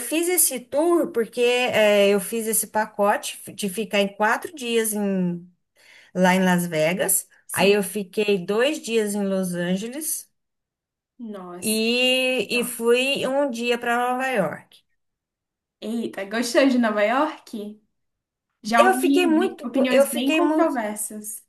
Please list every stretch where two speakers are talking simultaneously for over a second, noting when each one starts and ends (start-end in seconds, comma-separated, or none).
18.8-20.8